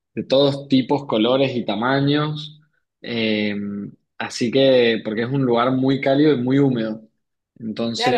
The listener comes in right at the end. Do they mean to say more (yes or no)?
yes